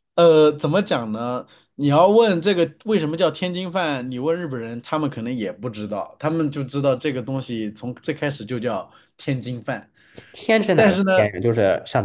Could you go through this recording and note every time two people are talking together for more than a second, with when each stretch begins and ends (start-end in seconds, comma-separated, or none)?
none